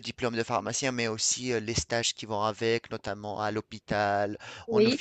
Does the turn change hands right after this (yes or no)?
no